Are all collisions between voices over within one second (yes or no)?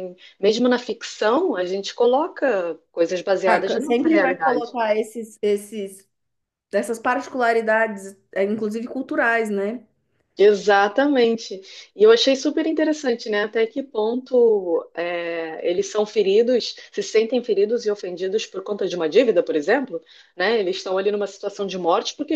no